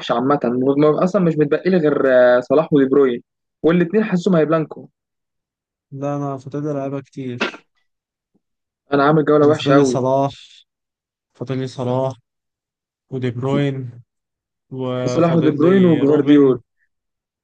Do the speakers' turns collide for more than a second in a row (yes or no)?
yes